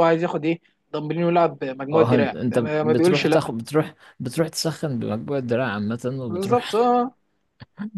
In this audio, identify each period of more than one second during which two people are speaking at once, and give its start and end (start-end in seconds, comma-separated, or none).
1.9-3.4